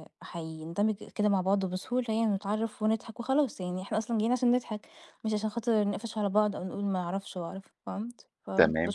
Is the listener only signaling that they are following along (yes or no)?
no